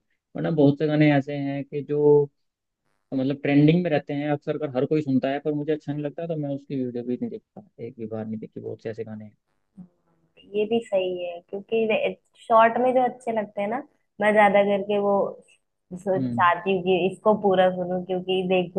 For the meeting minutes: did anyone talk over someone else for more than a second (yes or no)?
no